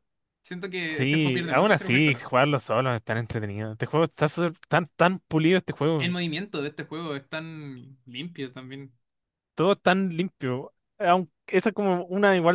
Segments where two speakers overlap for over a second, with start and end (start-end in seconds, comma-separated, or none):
0.9-2.2